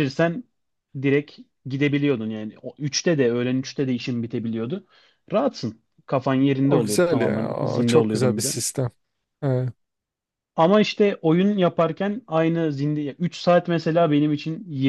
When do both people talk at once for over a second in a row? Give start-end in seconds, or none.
6.6-8.5